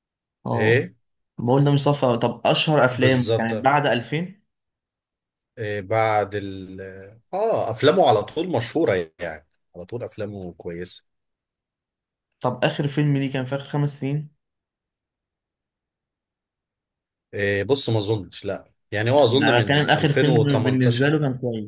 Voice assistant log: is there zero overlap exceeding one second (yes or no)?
no